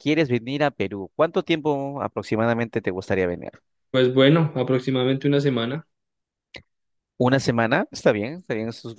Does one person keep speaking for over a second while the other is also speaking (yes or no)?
no